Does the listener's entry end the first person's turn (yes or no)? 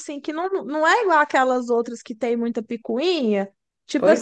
no